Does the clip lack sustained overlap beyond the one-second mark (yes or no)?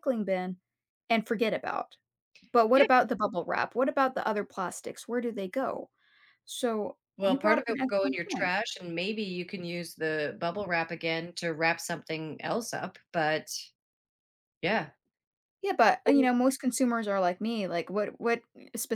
no